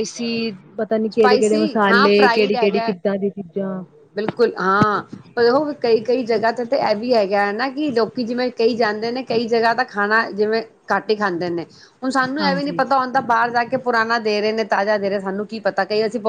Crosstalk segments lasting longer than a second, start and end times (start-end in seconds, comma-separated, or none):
1.1-2.9